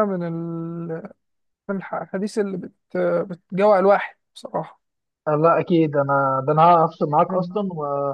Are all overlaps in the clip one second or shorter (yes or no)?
yes